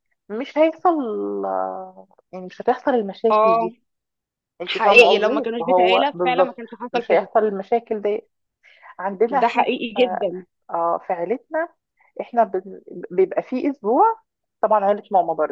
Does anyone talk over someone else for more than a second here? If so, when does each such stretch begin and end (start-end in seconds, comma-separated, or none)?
4.7-7.3